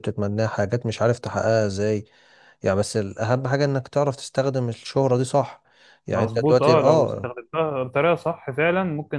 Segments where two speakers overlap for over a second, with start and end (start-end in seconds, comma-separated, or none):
6.1-7.3